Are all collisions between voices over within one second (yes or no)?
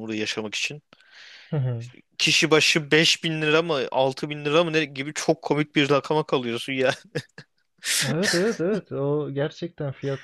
yes